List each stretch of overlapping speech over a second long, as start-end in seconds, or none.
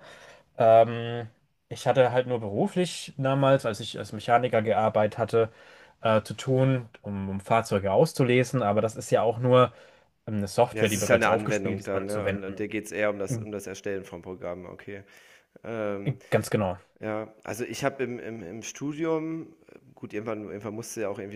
10.7-12.7